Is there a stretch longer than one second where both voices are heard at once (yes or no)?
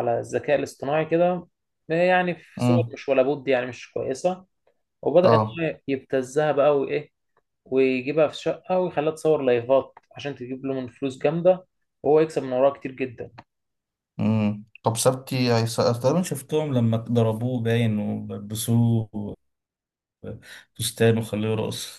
no